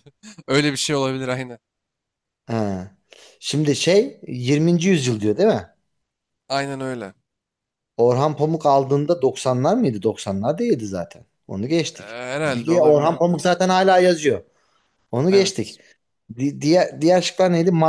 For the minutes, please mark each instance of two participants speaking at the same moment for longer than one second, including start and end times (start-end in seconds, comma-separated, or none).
11.9-13.4